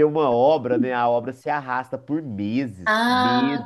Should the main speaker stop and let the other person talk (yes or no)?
yes